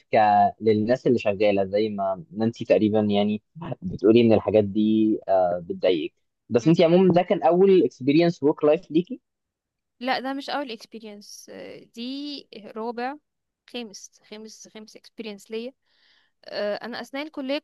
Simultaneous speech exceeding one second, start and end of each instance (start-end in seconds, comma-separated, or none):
none